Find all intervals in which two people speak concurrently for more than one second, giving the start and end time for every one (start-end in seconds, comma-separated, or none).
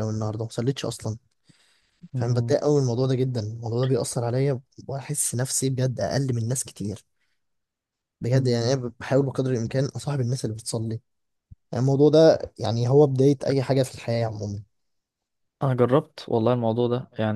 none